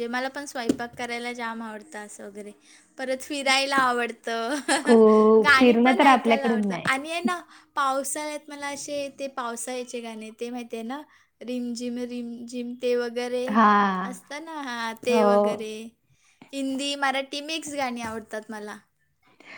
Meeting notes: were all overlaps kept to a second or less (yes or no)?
no